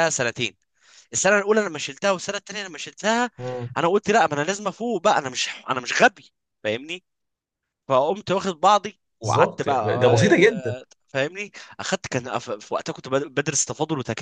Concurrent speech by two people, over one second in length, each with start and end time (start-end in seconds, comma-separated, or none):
9.2-10.7